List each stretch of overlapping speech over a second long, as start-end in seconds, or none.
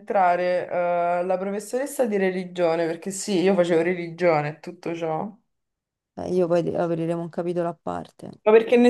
none